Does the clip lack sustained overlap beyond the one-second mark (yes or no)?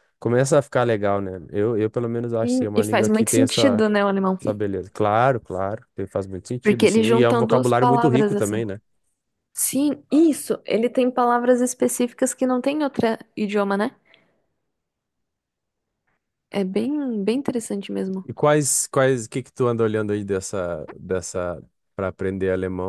no